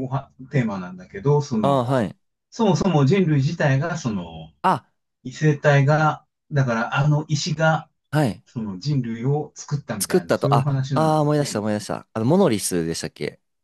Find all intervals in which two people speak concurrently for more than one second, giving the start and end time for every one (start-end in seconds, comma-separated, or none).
10.0-11.6